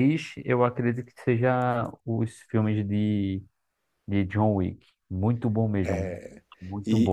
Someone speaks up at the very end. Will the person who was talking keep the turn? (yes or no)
no